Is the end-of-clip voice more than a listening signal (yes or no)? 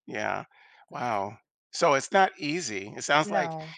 no